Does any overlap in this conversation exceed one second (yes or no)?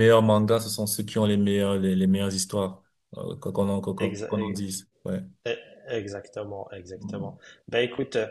no